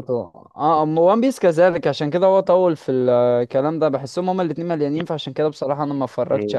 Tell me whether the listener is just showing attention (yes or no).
no